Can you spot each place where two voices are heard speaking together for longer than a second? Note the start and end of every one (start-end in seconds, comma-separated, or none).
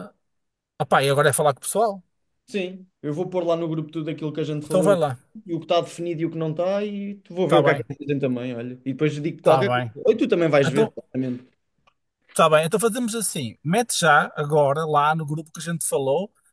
none